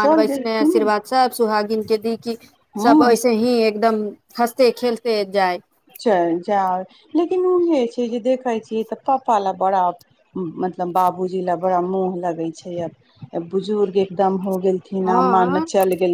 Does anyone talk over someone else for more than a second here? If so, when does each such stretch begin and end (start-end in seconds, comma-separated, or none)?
none